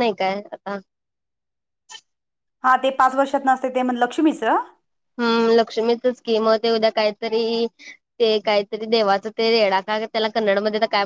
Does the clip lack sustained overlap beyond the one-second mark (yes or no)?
yes